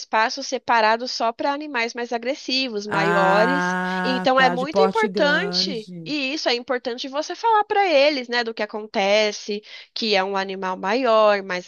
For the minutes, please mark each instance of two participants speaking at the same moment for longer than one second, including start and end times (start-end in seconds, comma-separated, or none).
2.9-6.1